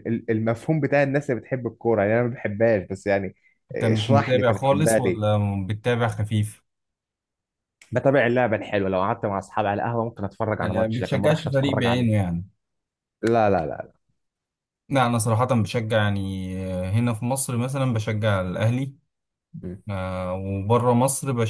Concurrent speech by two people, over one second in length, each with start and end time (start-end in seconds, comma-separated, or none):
3.8-5.4, 10.6-12.1